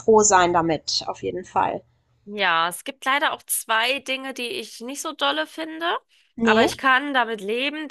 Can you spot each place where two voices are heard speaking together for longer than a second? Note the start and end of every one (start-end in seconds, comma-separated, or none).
none